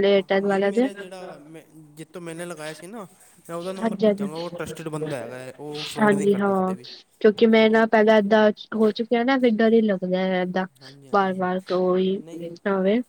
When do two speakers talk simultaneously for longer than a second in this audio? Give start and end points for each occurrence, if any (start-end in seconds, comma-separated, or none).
none